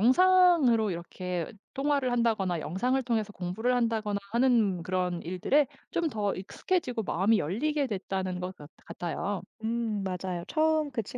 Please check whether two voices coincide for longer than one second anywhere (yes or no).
no